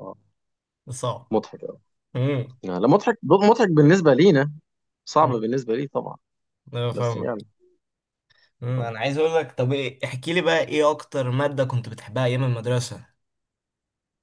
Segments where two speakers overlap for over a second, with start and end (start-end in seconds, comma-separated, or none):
none